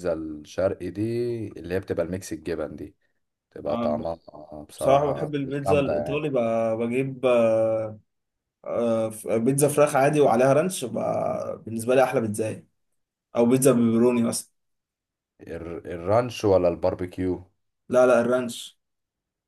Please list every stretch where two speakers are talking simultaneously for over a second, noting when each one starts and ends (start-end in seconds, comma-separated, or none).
4.8-6.2